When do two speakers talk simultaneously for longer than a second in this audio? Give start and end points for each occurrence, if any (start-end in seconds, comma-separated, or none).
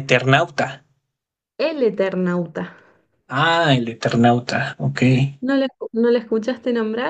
none